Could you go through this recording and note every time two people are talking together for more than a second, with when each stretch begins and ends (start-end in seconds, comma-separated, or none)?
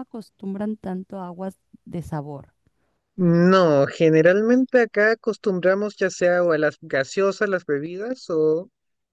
none